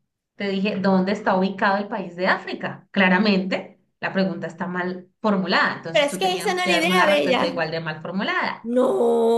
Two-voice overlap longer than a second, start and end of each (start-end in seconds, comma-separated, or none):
5.9-7.6